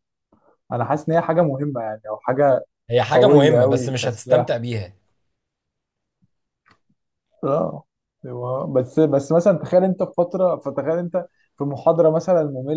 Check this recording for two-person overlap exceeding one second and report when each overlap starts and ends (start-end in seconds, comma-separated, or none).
3.1-4.5